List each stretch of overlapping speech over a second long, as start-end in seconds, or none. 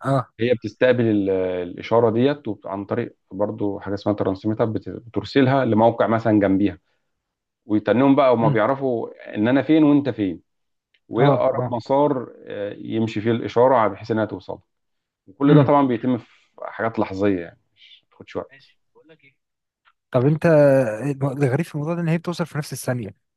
none